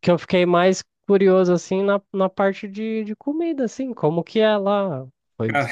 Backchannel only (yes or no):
yes